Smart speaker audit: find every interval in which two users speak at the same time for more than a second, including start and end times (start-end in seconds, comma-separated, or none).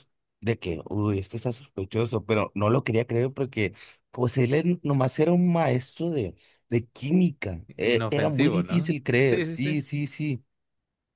7.8-9.8